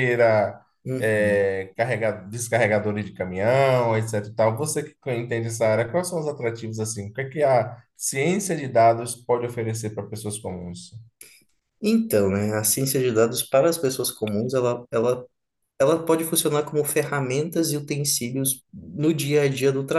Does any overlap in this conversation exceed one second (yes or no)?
no